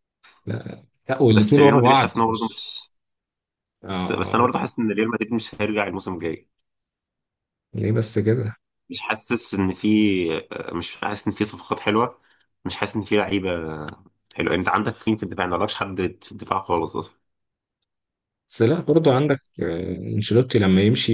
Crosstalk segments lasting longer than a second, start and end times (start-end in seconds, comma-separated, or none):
1.3-2.7